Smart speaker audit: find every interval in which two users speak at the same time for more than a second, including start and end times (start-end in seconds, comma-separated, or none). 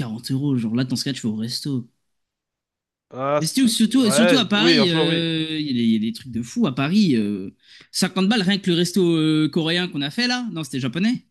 3.4-5.3